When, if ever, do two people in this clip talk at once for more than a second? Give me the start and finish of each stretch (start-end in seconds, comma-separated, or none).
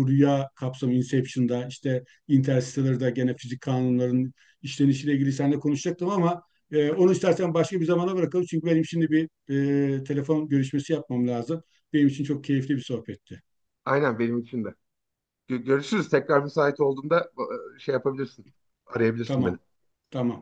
none